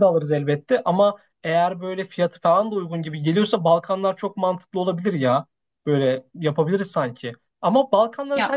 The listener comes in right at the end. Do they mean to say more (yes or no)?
no